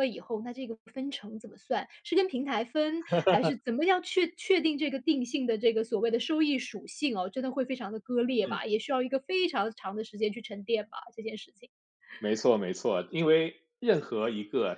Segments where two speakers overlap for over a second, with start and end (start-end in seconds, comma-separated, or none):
none